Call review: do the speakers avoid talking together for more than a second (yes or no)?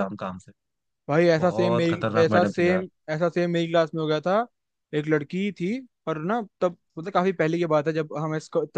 no